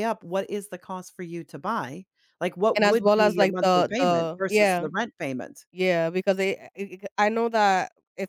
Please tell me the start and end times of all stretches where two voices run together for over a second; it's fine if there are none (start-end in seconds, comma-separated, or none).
2.8-4.9